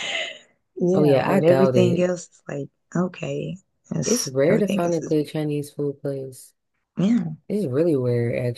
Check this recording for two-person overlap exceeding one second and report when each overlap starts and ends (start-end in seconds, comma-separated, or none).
0.9-2.1, 4.0-5.3